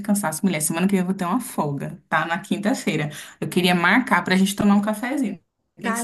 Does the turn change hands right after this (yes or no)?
yes